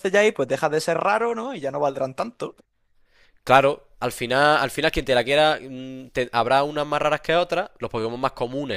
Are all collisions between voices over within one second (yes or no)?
yes